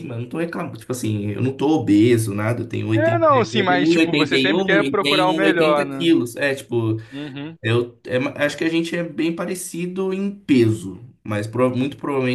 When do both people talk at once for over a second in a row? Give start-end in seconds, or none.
2.9-6.1